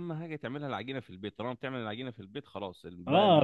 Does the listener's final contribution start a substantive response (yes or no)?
yes